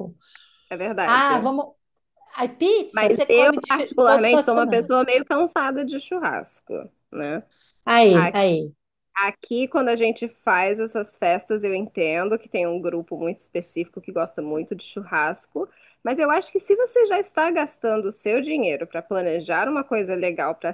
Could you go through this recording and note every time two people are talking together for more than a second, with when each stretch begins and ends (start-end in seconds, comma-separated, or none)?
2.9-4.9